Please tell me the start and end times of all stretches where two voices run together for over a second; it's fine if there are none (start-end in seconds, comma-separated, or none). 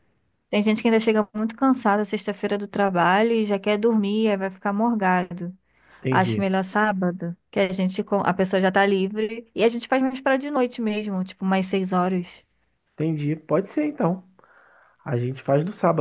none